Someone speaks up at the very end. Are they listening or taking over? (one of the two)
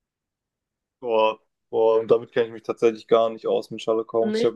listening